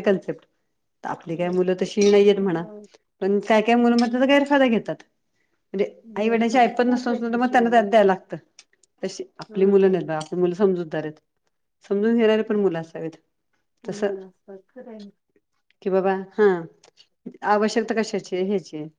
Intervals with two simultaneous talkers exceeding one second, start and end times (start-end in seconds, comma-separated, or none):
6.1-7.8